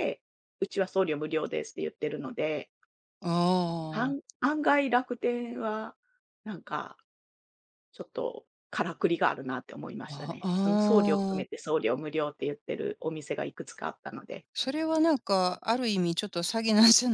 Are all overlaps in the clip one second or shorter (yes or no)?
no